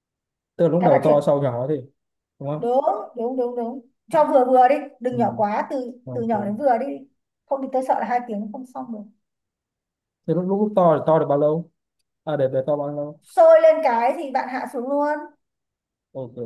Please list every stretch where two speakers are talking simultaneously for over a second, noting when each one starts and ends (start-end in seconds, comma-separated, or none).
none